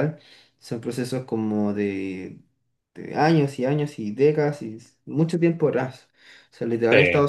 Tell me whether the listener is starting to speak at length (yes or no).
no